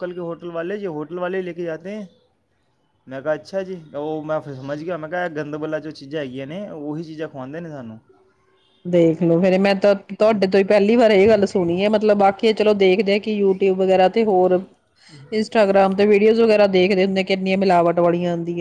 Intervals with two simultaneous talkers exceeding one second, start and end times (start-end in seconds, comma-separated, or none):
none